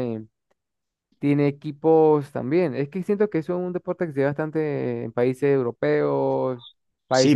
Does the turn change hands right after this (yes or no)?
yes